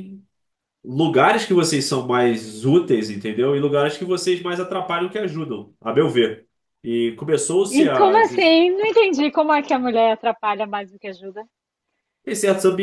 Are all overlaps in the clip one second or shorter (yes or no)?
yes